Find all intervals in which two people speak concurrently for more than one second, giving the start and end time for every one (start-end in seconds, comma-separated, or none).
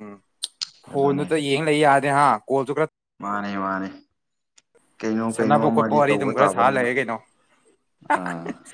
5.3-6.9